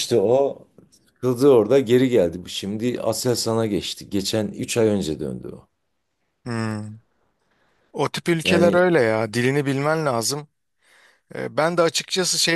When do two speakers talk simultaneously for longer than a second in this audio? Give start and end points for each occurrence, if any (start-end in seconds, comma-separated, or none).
none